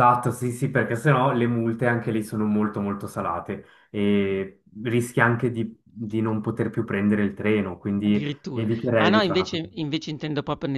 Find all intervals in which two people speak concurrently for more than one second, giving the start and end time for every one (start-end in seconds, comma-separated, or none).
8.0-9.6